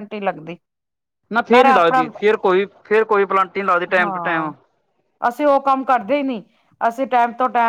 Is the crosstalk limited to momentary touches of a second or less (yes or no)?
yes